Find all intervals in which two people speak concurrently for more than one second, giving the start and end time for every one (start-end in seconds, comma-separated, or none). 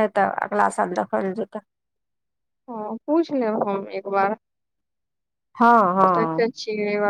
none